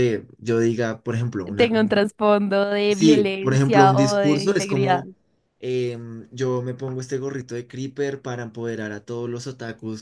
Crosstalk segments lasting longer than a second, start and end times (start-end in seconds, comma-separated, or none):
2.9-5.0